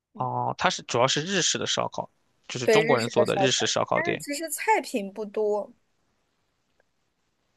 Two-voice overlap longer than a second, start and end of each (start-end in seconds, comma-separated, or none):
2.6-4.2